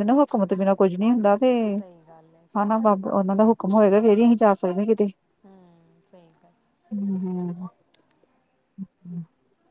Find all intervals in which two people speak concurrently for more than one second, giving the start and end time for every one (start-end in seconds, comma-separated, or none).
none